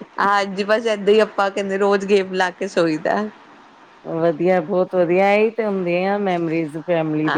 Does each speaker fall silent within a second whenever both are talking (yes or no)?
yes